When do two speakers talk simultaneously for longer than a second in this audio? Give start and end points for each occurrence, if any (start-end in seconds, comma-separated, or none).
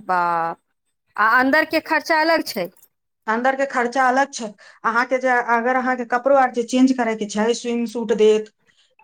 none